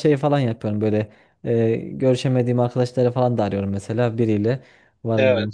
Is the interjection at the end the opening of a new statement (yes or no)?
no